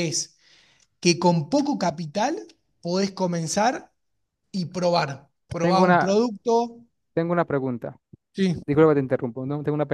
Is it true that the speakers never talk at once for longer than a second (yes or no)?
yes